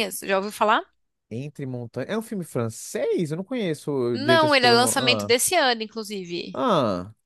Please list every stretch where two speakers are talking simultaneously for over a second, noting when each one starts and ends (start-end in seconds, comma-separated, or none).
4.1-5.3